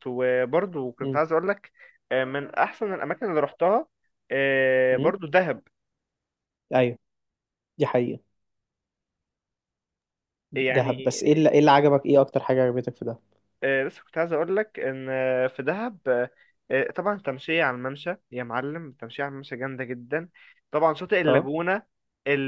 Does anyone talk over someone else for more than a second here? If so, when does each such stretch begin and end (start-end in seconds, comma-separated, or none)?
none